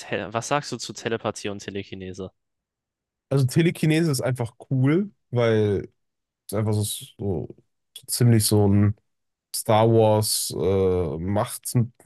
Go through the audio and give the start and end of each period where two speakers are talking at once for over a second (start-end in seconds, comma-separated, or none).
none